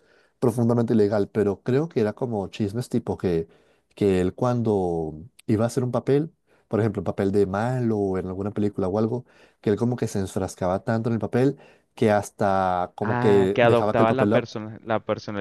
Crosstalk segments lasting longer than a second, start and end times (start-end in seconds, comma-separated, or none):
13.0-14.5